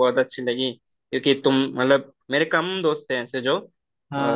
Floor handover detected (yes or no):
no